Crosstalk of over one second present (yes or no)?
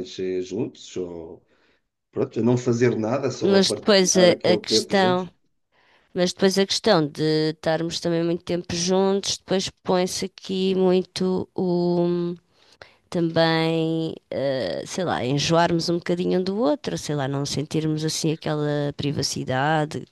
yes